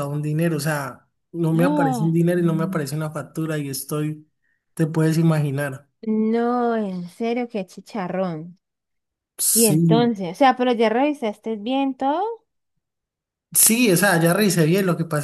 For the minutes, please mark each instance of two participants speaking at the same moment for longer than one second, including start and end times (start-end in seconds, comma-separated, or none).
1.5-2.9